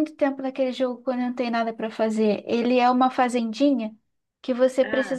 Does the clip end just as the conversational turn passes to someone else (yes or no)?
no